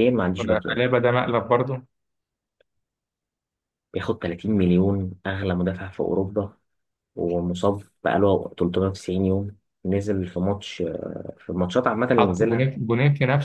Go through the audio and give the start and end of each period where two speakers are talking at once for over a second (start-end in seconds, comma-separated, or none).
none